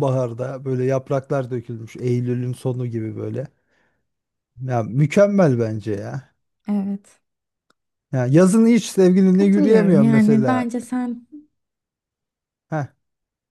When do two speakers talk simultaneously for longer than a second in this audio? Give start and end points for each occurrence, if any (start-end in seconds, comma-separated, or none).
9.3-10.7